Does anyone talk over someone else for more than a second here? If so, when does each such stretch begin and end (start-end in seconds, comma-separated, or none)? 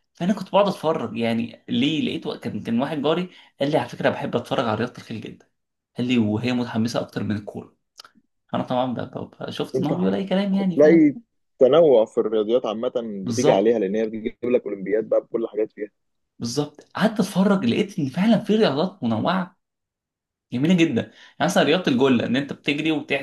9.8-11.1